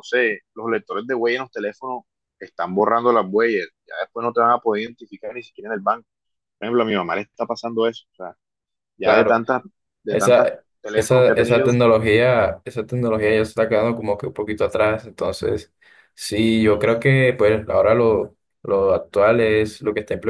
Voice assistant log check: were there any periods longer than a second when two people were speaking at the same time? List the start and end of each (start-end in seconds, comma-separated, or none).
10.1-11.7